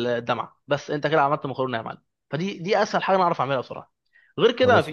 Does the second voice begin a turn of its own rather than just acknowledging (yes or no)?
no